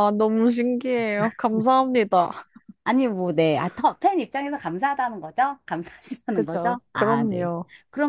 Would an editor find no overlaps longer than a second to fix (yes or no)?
no